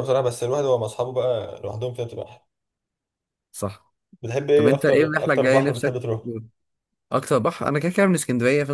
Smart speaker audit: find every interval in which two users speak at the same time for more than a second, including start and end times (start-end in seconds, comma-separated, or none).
4.5-6.0